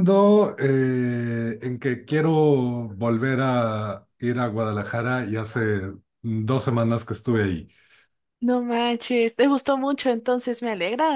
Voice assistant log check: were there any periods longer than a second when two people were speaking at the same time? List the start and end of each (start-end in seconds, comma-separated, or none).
none